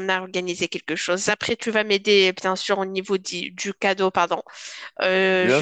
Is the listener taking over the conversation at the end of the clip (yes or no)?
yes